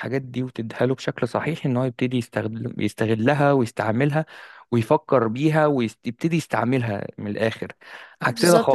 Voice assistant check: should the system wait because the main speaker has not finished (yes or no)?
no